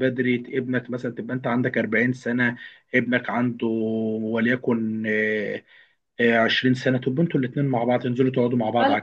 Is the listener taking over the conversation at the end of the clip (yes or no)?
yes